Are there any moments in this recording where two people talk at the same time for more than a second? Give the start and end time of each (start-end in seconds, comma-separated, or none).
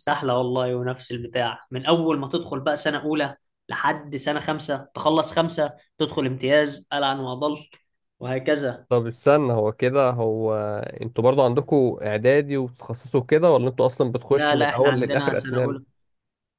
14.3-15.8